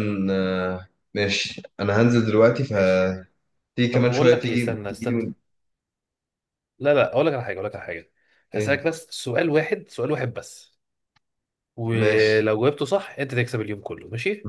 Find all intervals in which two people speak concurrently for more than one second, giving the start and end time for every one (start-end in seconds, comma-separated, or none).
3.9-5.2